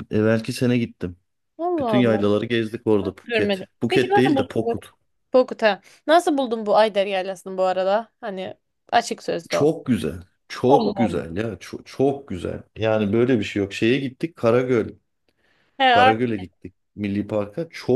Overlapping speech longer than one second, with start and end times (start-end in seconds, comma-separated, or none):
3.0-4.8